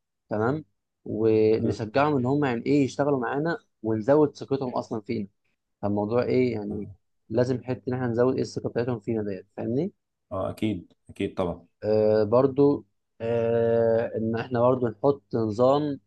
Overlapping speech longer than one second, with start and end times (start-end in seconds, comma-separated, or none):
none